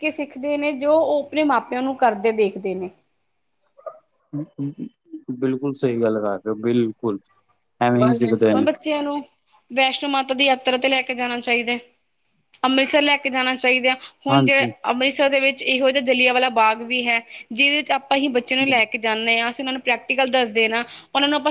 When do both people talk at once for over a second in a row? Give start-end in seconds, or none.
none